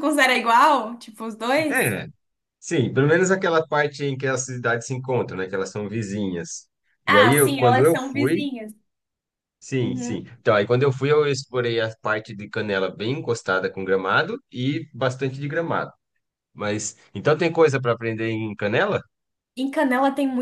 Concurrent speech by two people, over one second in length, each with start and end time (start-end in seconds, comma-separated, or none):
7.1-8.5